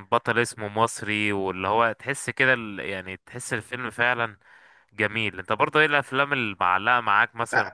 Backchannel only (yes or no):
yes